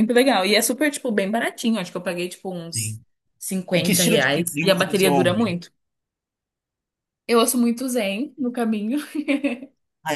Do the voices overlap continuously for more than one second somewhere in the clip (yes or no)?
yes